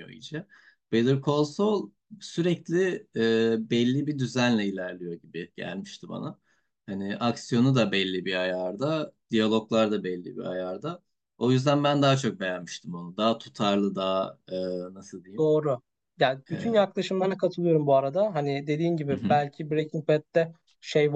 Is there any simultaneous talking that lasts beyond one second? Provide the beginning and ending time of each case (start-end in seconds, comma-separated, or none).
none